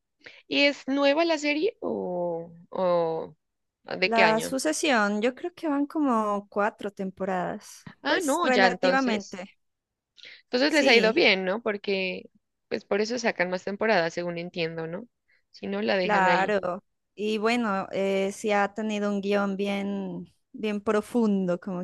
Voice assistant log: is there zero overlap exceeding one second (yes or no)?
no